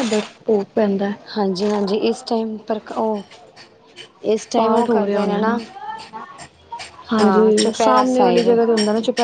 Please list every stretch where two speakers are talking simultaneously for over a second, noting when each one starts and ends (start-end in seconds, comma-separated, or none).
7.2-8.5